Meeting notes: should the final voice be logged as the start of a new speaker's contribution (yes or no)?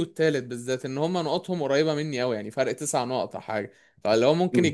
no